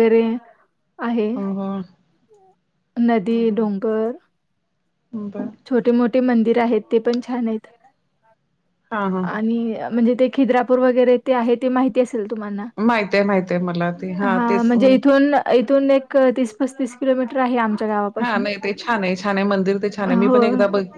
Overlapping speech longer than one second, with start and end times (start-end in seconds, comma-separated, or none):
none